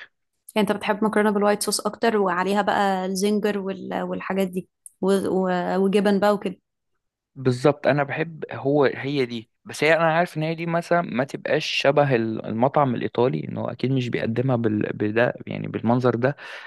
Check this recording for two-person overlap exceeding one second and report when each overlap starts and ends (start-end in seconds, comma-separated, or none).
none